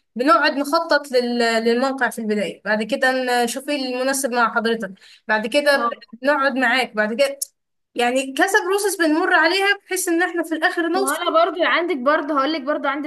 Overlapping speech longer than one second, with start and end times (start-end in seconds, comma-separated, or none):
none